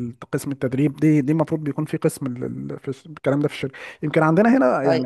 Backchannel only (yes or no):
yes